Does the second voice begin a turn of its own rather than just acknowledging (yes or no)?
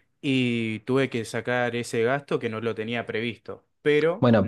yes